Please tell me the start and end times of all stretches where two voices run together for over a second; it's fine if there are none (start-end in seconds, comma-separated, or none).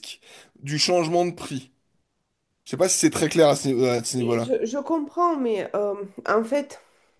none